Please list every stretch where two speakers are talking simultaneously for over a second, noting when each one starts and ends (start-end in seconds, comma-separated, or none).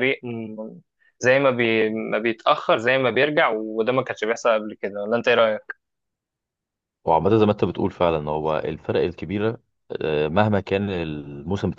none